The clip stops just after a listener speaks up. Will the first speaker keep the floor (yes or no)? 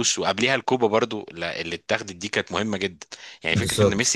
yes